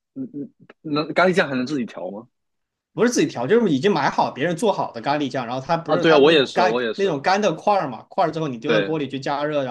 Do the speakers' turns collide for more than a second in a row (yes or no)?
yes